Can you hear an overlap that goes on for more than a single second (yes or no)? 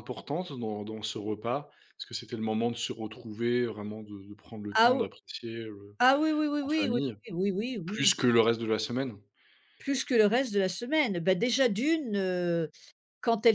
no